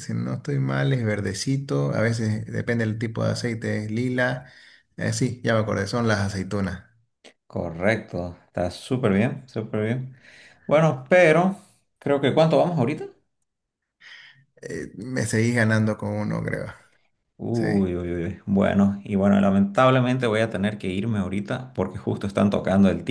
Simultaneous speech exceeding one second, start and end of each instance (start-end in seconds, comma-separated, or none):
none